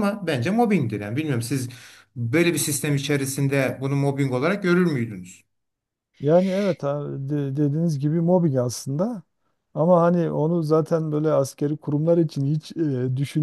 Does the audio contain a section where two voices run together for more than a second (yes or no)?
no